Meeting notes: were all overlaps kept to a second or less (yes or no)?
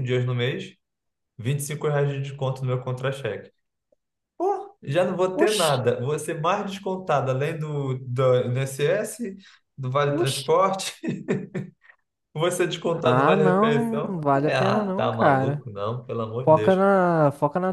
no